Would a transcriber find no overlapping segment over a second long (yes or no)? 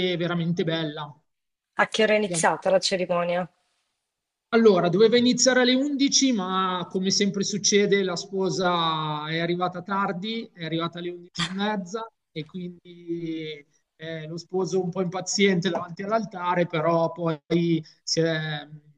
yes